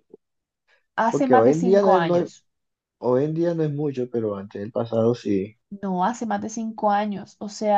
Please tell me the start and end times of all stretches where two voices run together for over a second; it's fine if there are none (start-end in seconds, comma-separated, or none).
1.1-2.3